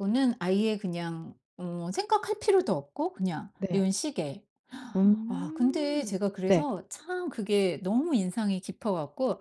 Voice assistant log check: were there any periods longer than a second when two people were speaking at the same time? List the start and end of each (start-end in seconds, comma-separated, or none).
5.3-6.7